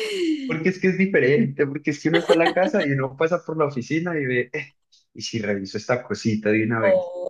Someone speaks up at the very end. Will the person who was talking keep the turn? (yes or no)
yes